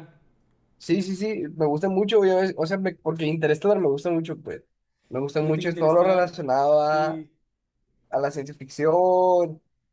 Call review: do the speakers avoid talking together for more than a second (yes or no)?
no